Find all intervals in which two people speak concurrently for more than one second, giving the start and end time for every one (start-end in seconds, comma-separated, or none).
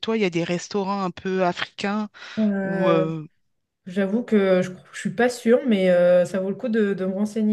none